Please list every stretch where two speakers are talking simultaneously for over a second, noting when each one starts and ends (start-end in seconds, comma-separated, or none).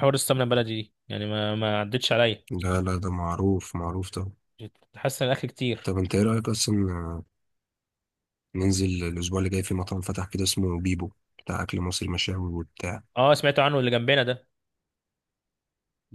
none